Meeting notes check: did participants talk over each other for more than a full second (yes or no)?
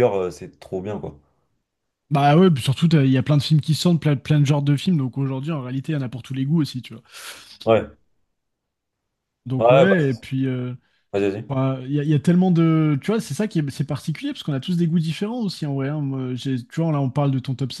no